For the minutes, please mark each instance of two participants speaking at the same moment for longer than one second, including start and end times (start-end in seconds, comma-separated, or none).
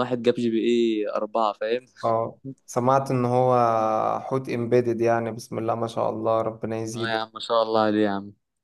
none